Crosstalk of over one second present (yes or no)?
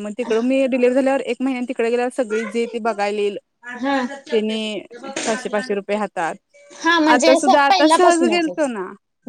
yes